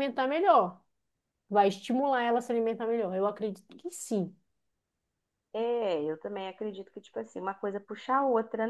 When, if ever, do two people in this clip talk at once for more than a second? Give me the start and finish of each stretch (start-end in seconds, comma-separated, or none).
none